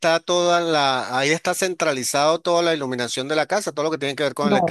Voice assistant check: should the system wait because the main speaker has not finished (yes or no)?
no